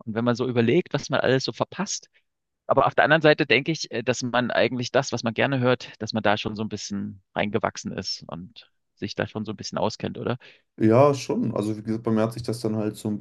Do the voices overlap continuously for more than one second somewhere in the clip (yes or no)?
no